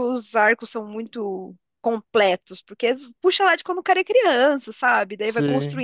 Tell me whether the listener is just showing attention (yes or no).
yes